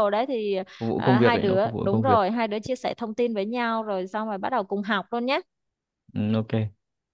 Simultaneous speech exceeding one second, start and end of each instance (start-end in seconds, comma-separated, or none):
1.0-2.2